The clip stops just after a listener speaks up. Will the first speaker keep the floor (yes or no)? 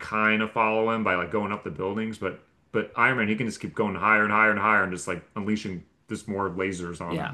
no